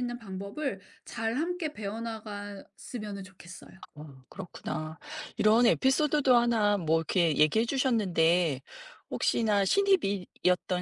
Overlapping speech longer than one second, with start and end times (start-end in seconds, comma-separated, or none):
none